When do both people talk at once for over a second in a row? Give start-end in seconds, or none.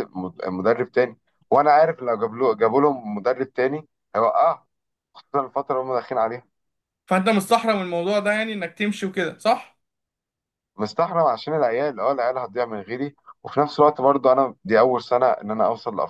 none